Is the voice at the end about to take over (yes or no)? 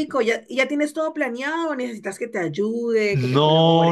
yes